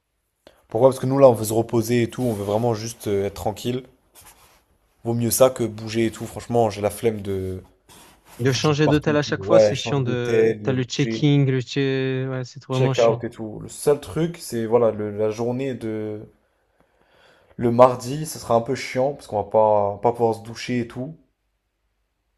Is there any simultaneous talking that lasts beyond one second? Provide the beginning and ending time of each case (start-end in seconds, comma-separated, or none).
8.4-11.2